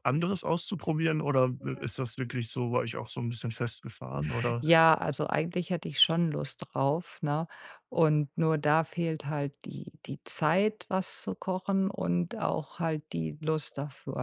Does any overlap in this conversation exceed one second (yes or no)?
no